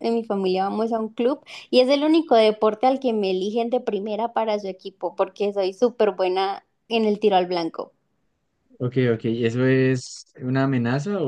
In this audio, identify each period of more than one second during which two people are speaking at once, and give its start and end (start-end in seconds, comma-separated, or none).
none